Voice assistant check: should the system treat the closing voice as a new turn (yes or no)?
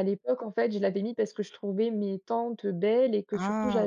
no